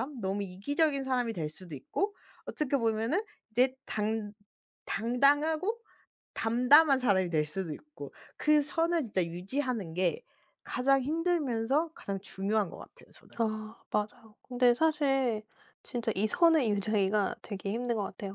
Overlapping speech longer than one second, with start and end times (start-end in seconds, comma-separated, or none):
none